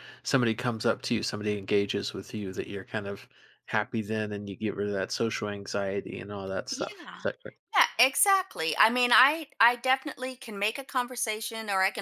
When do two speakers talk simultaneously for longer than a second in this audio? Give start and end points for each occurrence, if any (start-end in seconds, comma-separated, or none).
none